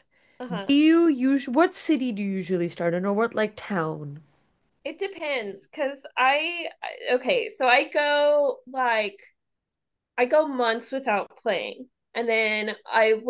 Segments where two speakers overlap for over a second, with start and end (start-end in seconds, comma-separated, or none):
none